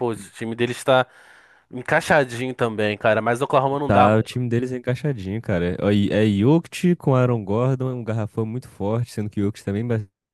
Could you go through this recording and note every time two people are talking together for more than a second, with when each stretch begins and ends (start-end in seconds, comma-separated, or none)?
none